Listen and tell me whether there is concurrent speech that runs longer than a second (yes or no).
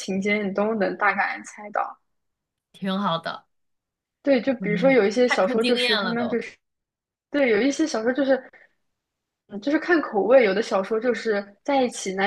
yes